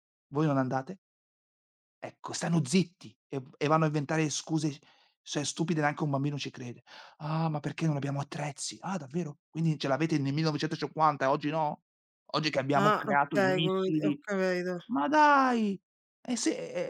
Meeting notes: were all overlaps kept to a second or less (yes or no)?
no